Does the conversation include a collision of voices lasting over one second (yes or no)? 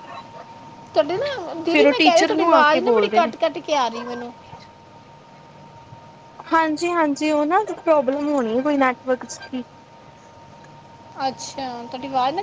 yes